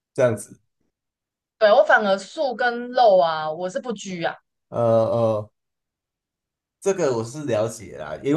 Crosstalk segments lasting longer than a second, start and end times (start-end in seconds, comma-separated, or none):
none